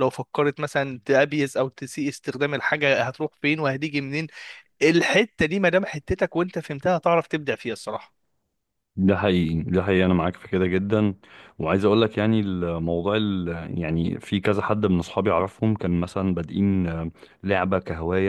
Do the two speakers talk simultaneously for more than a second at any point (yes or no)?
no